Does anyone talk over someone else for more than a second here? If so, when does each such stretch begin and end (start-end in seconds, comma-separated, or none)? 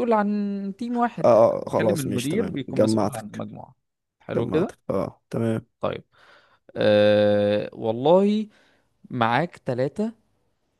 1.2-3.4